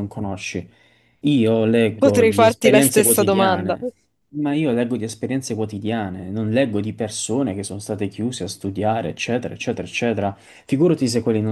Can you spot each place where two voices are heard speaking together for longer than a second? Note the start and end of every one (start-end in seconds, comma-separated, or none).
2.0-3.8